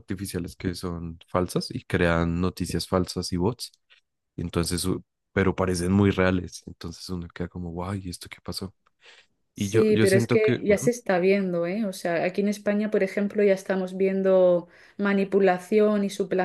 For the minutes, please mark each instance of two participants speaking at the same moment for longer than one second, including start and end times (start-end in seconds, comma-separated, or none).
9.6-10.9